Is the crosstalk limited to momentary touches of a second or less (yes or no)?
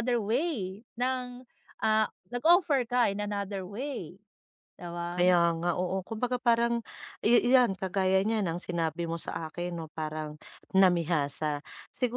yes